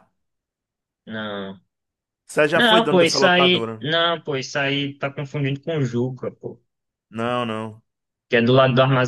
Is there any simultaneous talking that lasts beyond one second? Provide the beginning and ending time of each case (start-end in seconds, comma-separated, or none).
2.5-3.9